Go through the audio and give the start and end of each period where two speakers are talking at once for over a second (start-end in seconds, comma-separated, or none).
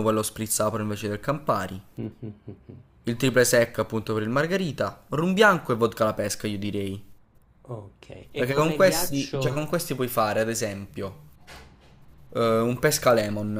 8.3-9.6